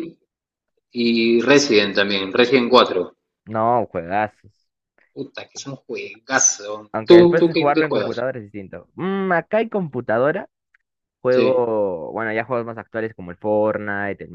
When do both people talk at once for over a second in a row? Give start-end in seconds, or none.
6.9-8.2